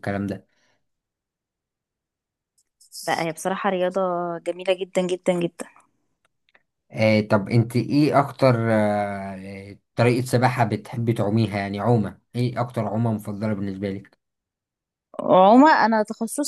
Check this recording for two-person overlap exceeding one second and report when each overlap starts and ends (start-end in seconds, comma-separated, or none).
none